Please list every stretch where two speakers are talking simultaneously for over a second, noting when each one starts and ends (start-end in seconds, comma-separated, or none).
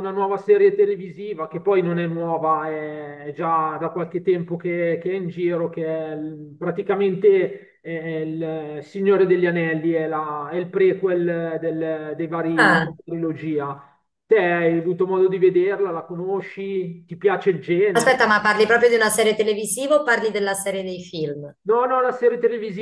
none